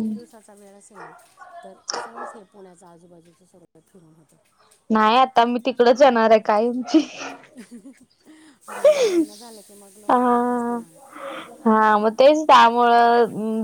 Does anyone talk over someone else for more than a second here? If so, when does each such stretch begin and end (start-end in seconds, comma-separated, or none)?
none